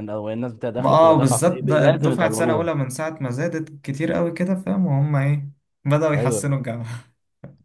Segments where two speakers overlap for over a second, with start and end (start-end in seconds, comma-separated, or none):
0.8-2.7